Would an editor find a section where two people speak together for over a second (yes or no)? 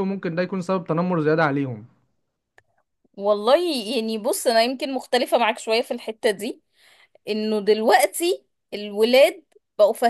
no